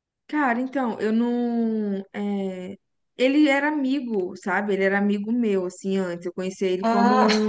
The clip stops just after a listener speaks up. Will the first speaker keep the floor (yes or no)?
yes